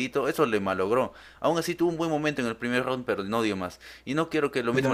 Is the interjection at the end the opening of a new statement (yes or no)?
no